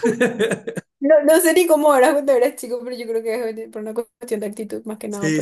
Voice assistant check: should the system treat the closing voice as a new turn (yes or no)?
yes